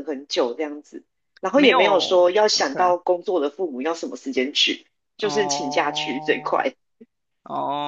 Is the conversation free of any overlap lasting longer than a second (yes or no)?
no